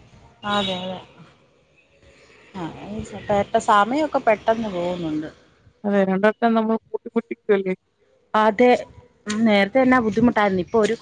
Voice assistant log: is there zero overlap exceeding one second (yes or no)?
yes